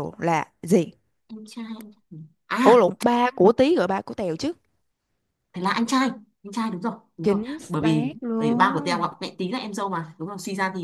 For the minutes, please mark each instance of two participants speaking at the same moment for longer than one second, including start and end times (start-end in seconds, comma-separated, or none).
7.2-9.1